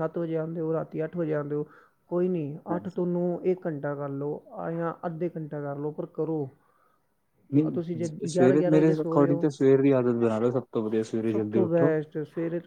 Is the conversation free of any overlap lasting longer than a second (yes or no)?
no